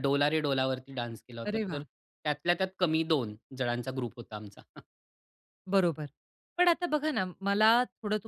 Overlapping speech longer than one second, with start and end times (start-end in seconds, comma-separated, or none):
none